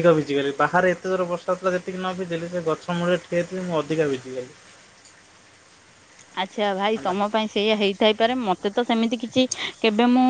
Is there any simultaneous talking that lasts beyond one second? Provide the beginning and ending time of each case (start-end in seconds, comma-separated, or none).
none